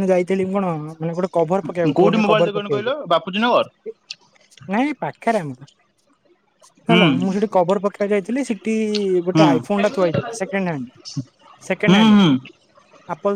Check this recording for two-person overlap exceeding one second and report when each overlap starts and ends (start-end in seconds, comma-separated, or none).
2.0-3.7